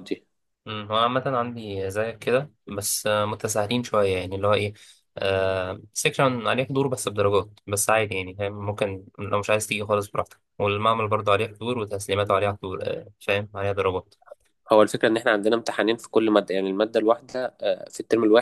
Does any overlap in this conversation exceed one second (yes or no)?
no